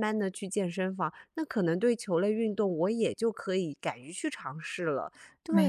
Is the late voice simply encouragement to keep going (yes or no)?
no